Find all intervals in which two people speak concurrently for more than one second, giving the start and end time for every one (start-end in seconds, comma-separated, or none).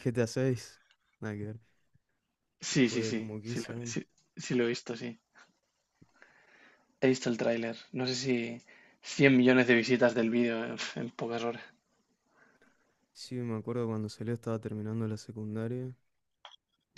2.7-4.0